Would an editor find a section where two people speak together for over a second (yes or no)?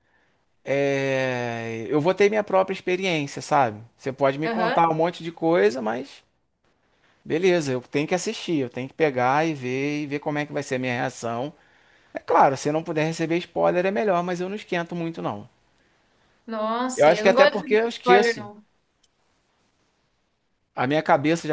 yes